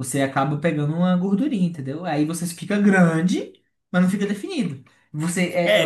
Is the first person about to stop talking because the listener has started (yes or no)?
yes